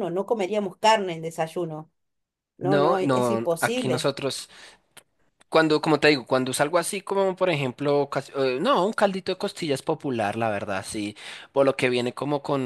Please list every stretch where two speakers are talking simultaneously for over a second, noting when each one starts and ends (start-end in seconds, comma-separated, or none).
2.6-4.1